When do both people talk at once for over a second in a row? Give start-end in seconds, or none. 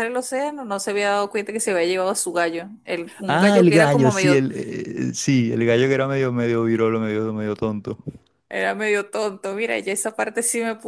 3.3-4.5